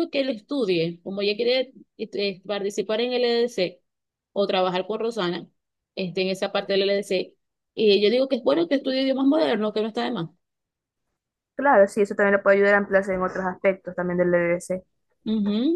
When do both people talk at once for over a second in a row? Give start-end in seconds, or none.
none